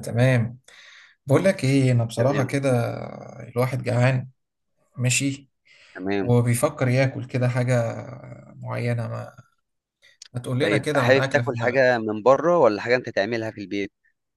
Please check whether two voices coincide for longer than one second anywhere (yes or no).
yes